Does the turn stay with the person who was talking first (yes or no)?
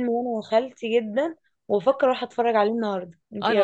no